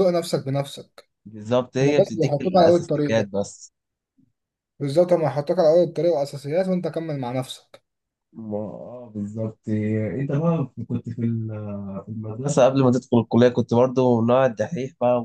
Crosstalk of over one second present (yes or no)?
yes